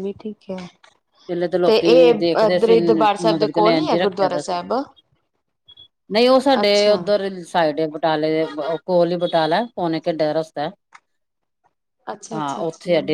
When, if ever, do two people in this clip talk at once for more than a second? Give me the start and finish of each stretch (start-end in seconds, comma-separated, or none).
1.6-4.6